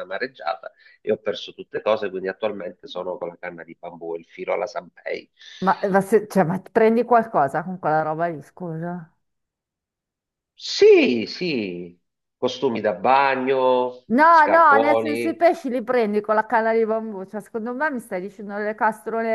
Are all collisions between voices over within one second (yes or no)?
no